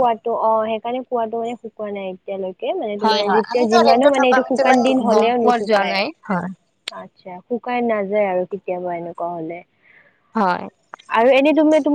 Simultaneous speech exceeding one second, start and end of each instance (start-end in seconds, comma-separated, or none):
3.0-6.5